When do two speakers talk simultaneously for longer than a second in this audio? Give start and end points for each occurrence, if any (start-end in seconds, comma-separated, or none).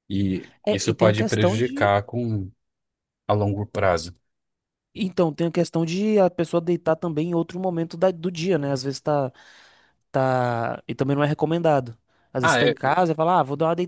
0.7-1.9